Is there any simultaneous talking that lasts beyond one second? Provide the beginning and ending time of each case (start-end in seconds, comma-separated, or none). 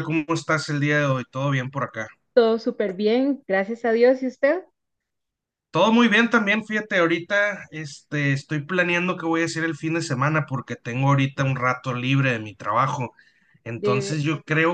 none